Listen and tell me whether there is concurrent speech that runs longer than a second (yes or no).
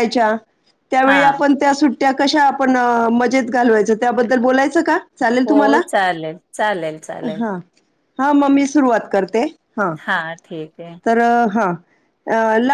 no